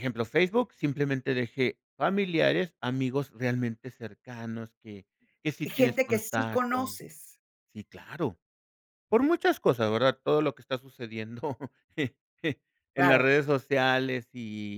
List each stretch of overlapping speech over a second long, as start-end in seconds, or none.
5.6-6.9